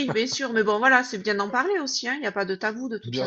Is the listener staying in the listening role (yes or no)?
no